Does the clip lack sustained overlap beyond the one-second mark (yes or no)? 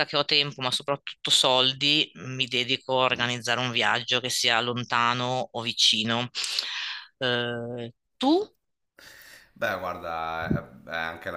yes